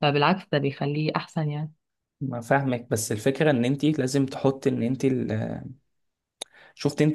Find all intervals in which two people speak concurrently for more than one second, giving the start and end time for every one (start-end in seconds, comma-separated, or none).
none